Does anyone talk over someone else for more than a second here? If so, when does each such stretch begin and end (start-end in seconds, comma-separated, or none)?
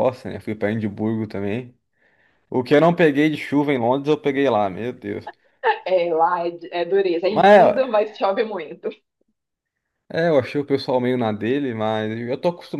none